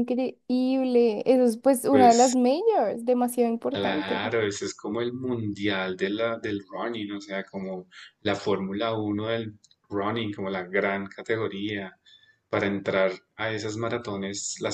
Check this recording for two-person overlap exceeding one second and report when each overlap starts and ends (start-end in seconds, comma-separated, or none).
none